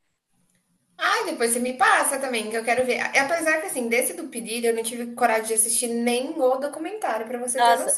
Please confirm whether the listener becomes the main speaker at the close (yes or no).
yes